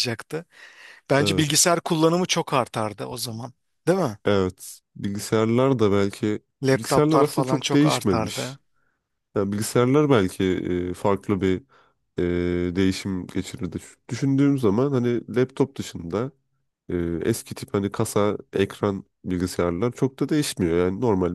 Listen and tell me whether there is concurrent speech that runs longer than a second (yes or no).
yes